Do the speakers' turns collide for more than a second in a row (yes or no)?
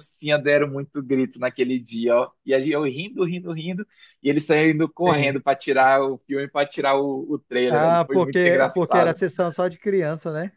yes